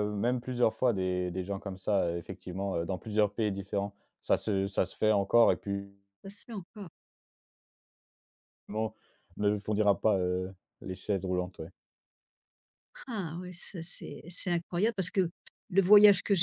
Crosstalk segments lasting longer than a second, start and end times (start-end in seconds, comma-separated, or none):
none